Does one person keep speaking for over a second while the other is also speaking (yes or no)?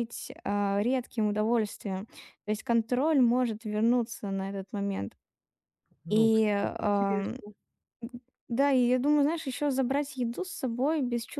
yes